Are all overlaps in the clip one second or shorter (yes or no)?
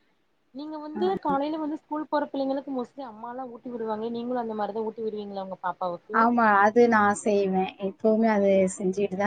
yes